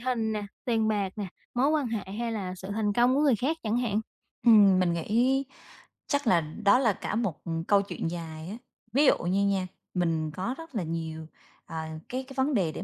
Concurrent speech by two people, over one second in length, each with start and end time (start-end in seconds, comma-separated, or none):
none